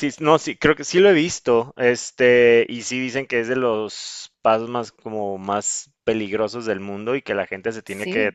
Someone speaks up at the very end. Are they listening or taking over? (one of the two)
listening